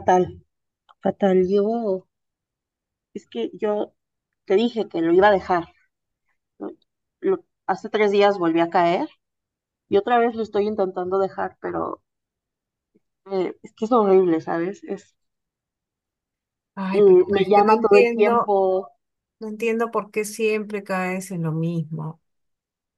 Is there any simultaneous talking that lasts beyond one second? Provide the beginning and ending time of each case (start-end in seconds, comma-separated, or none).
16.9-18.6